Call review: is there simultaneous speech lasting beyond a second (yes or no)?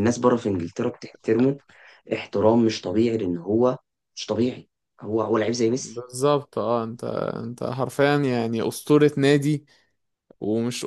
no